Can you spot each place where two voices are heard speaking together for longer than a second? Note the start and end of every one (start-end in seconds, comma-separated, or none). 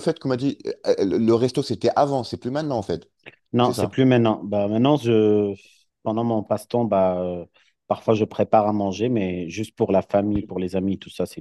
none